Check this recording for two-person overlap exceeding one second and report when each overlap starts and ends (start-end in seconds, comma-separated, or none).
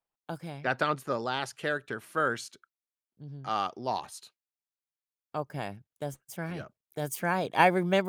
none